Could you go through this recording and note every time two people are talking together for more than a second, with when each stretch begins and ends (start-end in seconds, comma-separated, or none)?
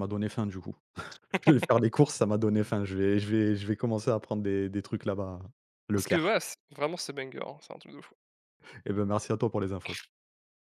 none